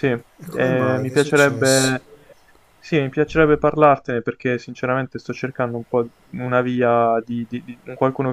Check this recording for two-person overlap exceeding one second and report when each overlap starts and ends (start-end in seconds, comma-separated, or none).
0.5-1.9